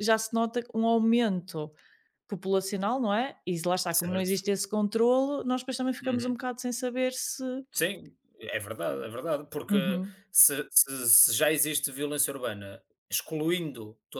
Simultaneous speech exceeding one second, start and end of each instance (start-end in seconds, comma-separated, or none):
none